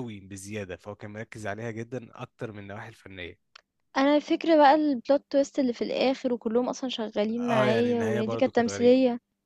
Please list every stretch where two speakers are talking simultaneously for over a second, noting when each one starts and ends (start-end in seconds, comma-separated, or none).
7.5-8.9